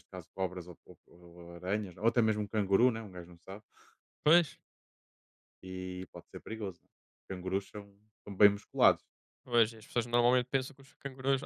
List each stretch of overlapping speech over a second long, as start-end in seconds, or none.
none